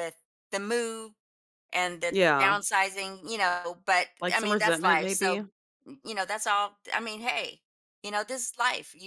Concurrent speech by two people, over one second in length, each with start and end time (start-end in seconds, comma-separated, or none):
4.2-5.4